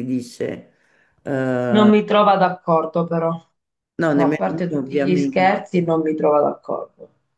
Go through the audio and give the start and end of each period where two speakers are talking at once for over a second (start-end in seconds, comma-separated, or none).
4.1-5.6